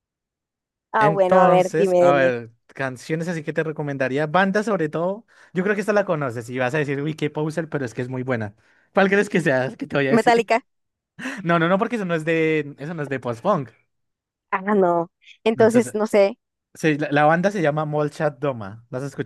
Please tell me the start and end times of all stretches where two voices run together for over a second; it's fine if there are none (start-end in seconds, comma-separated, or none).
1.0-2.3